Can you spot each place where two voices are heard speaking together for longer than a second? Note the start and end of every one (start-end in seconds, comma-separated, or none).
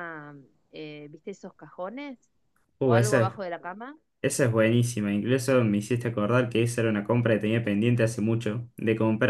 none